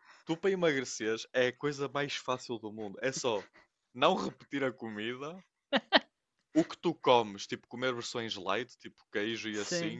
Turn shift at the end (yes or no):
no